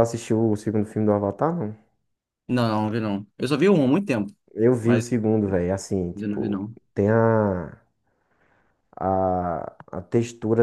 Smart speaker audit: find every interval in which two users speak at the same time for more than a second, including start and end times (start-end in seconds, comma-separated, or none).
none